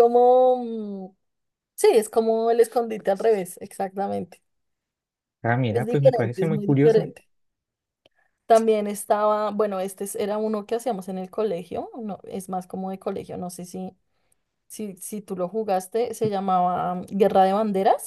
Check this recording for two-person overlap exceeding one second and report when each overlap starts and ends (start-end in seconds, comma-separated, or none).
5.7-7.1